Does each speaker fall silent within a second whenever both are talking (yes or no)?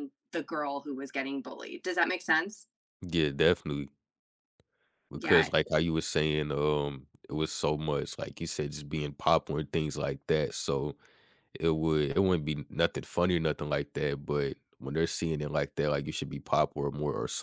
yes